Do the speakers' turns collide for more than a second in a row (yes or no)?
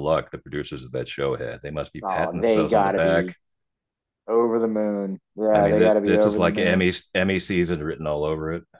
yes